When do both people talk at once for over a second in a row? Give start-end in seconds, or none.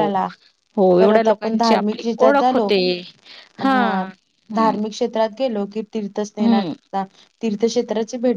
1.0-2.6